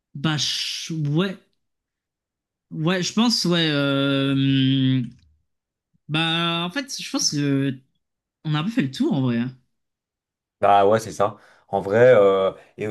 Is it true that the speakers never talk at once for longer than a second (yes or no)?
yes